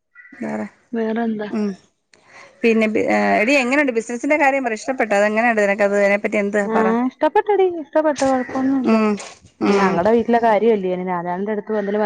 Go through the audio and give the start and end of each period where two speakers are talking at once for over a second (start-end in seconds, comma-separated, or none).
3.6-5.5